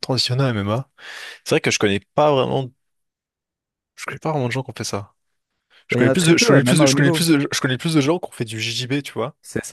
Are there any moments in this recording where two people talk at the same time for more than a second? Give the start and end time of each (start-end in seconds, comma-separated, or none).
5.9-7.3